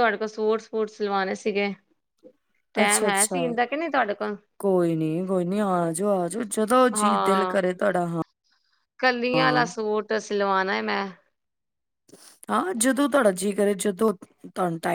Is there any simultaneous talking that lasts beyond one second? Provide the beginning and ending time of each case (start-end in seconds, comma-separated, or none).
none